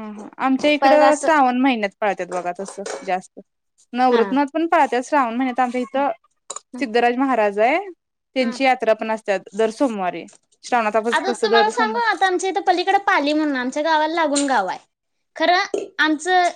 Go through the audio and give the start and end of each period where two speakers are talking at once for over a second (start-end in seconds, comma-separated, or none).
none